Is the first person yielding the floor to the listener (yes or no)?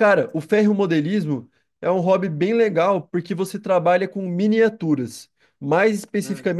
no